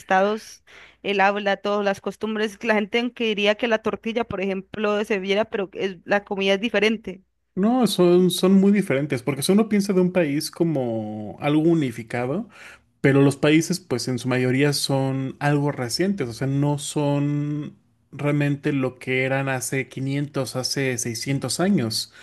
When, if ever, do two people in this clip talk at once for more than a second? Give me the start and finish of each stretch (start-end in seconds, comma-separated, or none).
none